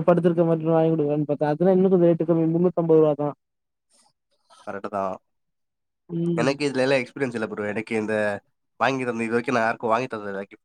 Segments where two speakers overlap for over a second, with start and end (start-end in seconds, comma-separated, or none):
none